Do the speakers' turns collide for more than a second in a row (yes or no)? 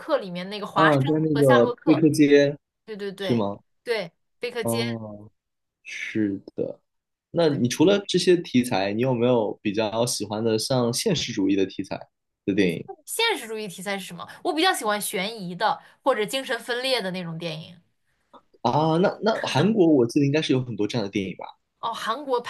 yes